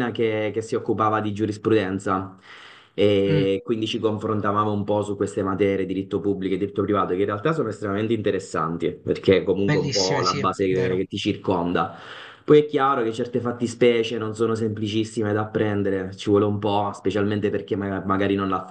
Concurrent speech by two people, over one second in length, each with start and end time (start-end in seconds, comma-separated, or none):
9.7-11.1